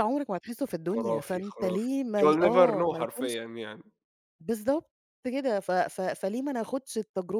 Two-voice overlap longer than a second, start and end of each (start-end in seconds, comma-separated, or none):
0.9-3.3